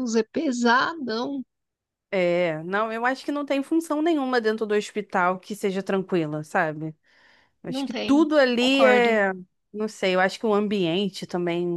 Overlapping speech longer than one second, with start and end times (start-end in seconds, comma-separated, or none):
7.7-9.2